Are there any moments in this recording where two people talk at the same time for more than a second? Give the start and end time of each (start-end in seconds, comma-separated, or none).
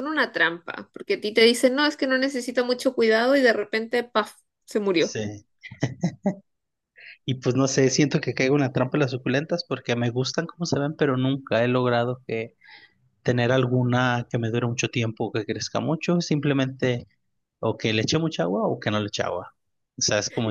none